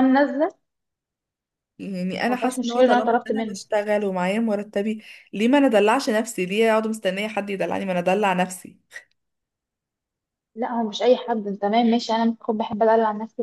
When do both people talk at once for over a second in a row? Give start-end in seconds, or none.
2.3-3.6